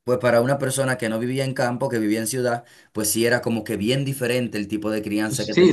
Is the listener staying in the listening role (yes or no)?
no